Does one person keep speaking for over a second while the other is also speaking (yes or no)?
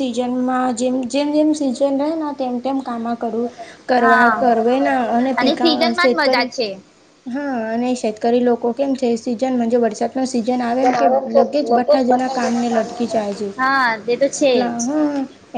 yes